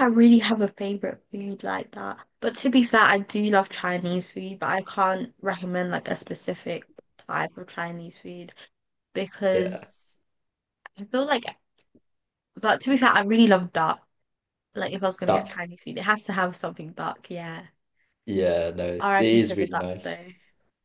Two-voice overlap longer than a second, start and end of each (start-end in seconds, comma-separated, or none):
19.0-20.2